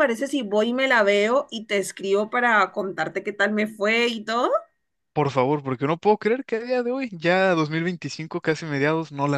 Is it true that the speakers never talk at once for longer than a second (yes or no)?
yes